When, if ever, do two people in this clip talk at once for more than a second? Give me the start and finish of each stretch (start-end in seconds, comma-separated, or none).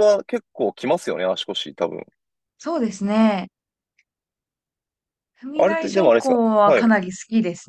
5.5-6.9